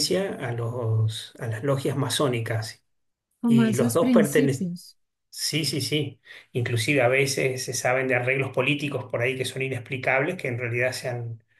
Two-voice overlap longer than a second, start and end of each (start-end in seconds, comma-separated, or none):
3.4-4.7